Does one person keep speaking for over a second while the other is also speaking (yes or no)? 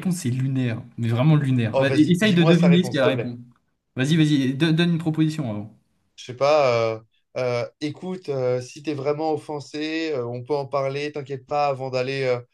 yes